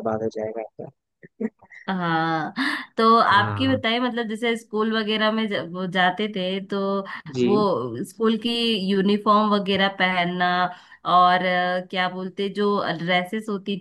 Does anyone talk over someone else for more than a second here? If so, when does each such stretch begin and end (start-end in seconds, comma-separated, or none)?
none